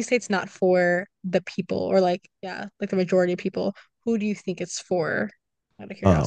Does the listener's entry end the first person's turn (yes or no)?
yes